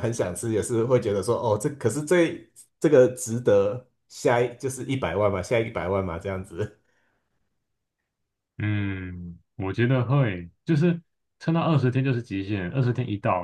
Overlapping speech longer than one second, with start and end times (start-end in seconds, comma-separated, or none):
none